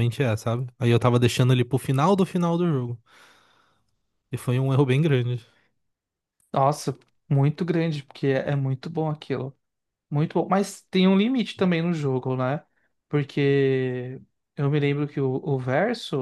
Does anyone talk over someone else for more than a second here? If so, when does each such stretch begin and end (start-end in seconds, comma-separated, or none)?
none